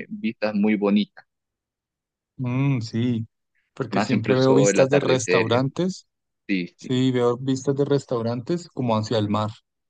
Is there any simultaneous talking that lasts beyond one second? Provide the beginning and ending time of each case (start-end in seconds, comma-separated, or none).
3.9-5.8